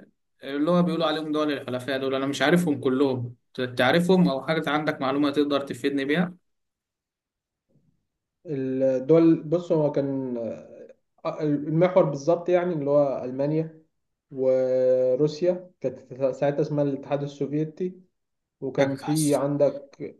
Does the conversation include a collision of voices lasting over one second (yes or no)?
no